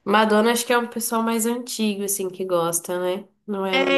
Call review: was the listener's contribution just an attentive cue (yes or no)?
no